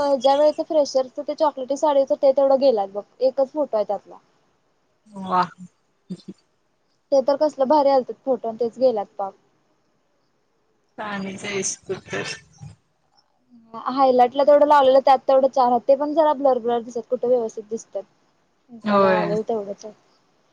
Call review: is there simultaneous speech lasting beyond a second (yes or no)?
no